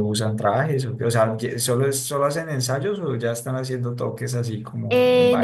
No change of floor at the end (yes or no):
no